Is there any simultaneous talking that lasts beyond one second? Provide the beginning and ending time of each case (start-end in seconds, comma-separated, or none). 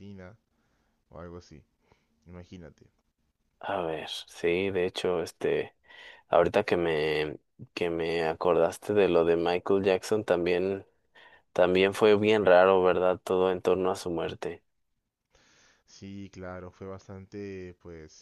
none